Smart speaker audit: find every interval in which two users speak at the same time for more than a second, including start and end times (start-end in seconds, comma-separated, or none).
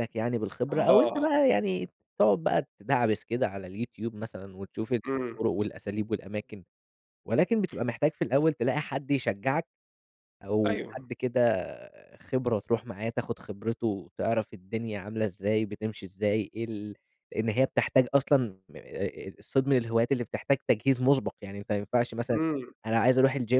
none